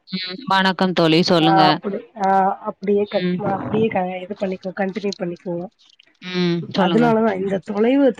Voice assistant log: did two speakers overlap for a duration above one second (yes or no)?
no